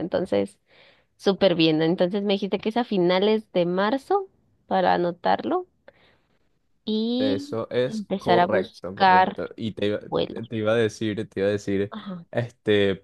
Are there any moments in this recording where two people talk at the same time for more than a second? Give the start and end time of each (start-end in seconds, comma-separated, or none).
7.2-9.4